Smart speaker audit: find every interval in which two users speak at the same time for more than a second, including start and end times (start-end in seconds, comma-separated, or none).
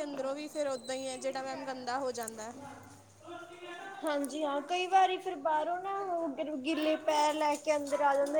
none